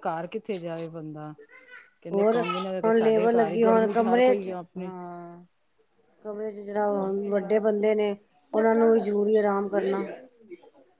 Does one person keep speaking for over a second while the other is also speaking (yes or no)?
yes